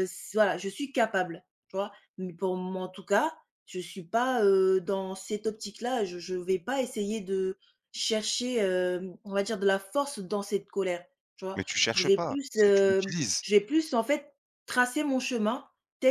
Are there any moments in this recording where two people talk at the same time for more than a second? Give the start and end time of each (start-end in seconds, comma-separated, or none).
11.6-13.4